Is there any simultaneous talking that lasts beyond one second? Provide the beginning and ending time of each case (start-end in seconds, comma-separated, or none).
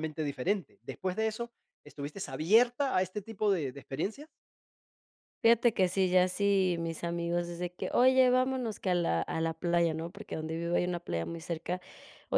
none